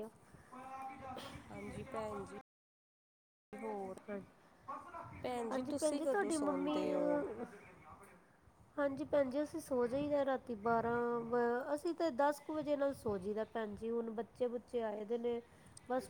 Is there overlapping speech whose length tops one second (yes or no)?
yes